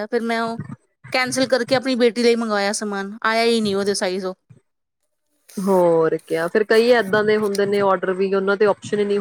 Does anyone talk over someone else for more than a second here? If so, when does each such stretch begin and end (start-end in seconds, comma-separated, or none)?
none